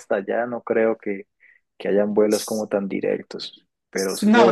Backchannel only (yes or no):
no